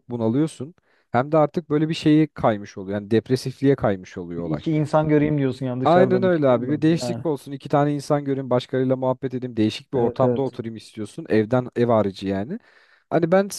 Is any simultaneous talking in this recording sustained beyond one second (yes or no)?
yes